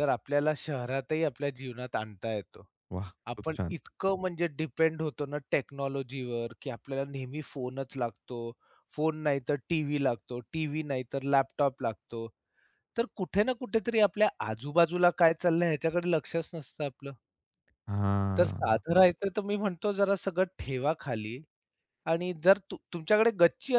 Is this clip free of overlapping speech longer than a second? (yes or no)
yes